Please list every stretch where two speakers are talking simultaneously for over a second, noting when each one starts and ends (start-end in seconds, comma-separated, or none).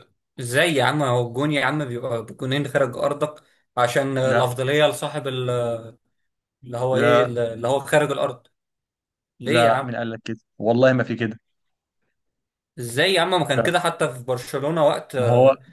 none